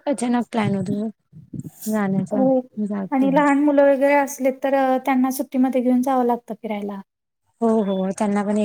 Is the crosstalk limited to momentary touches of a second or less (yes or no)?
yes